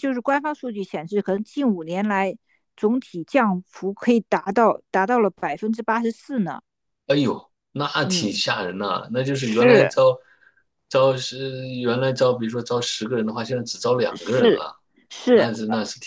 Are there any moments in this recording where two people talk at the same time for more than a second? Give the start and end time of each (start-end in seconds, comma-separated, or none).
none